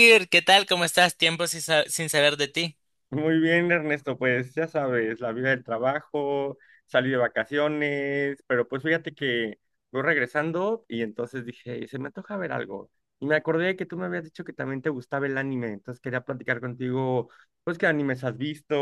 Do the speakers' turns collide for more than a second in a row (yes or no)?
no